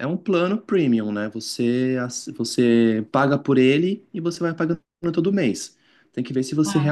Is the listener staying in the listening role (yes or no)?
yes